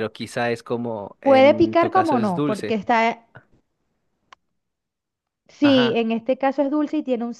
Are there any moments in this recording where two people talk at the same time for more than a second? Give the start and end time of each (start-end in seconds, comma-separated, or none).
1.2-2.8